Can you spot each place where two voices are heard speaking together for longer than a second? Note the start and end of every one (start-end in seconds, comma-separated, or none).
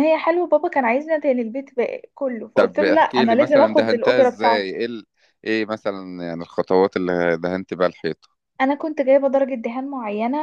2.5-4.7